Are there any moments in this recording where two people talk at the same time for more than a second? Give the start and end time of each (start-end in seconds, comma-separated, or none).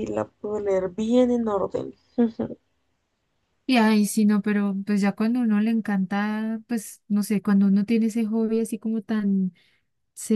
none